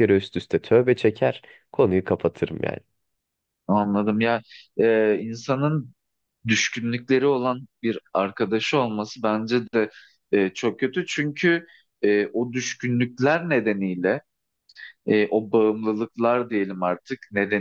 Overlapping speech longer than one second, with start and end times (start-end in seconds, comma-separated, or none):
none